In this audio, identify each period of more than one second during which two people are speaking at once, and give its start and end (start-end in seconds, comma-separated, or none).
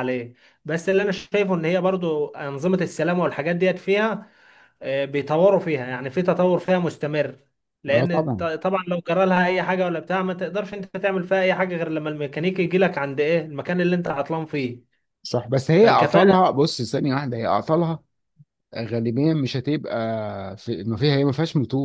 none